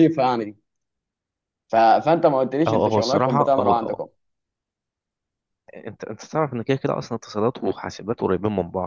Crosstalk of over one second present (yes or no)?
yes